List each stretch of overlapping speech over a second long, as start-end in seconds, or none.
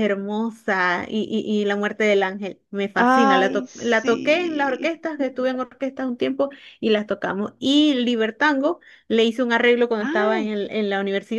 3.0-4.9